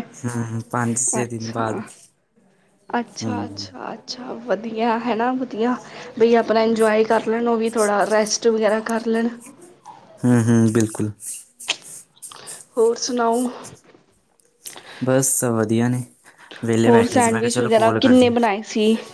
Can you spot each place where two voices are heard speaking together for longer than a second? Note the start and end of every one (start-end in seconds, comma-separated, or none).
16.9-18.3